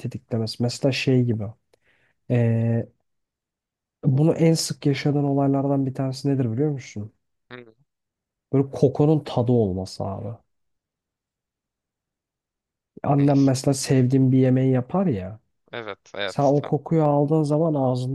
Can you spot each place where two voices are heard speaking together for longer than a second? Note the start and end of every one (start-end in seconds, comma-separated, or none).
none